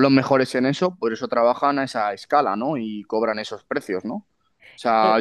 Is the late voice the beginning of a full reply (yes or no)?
no